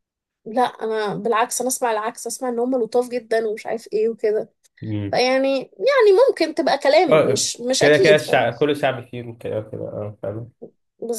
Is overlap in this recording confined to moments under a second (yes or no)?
no